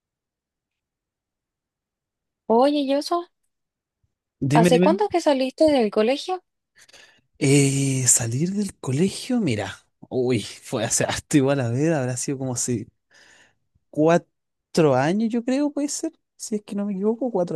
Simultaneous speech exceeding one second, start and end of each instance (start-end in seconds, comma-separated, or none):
none